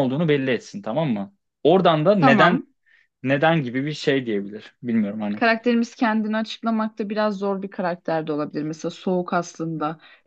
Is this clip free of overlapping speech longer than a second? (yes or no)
yes